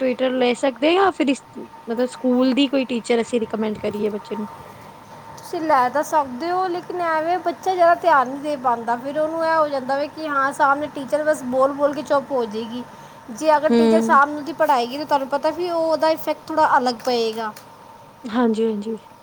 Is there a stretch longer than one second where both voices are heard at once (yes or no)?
no